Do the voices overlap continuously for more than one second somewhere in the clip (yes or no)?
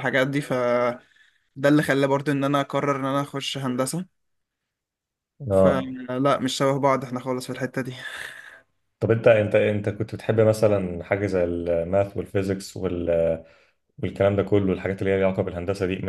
no